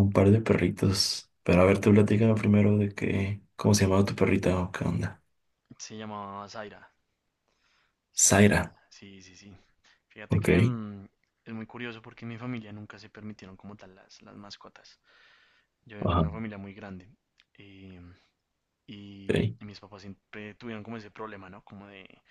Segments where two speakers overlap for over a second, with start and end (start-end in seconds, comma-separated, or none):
none